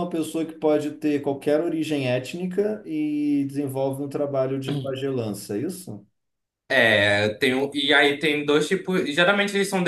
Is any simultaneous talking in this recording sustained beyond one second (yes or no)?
no